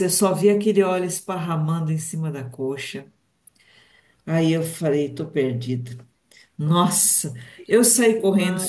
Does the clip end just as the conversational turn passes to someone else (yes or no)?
no